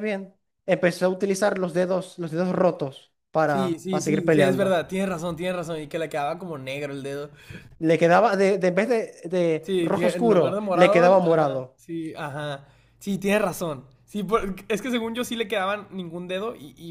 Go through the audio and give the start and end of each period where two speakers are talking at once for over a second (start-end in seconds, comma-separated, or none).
3.5-4.8, 9.6-11.8